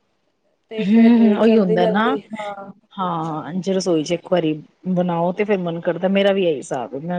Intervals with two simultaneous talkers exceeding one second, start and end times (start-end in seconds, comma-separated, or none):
0.9-2.2